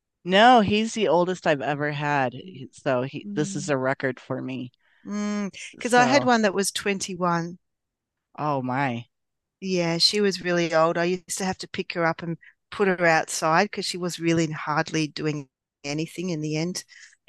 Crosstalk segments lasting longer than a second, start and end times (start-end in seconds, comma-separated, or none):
none